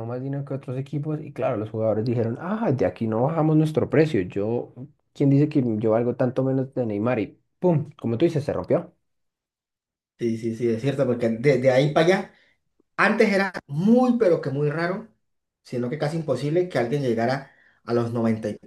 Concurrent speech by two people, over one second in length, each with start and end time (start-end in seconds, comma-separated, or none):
none